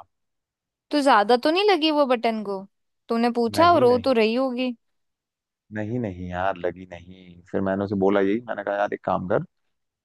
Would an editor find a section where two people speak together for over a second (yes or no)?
no